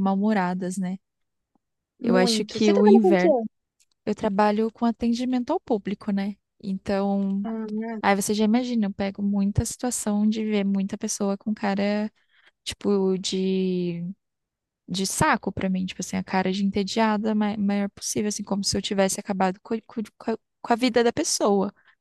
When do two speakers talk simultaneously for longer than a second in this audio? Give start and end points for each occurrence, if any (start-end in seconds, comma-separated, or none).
2.0-3.3